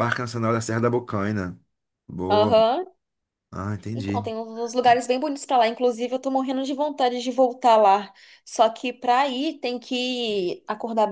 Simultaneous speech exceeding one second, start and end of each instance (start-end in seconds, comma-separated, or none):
none